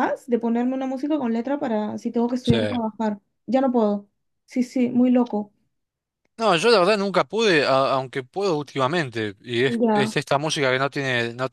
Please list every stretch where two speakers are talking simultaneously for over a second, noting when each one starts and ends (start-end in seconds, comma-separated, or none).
none